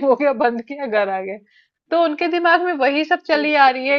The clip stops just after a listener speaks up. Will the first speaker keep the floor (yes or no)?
yes